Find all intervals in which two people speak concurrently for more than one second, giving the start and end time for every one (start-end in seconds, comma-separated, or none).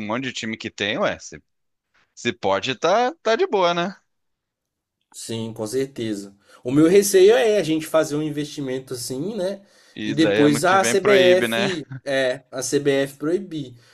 10.1-11.7